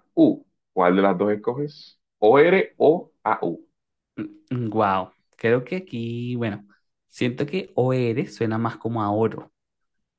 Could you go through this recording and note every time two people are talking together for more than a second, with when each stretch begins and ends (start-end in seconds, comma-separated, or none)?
none